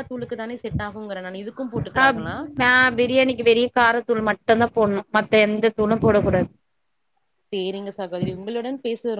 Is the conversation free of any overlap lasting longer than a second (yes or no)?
yes